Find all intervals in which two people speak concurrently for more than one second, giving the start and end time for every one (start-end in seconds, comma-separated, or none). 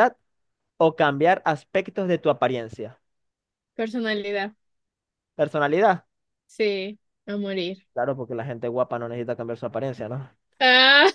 none